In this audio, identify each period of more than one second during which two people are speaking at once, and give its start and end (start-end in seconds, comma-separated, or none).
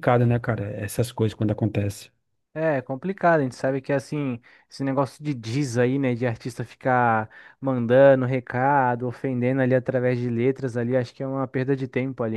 none